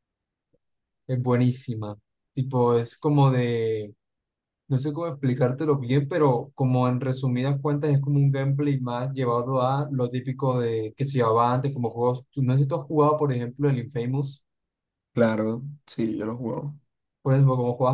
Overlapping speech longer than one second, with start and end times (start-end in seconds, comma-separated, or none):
none